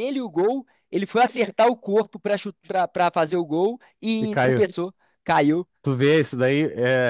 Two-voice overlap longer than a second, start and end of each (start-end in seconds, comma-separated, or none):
none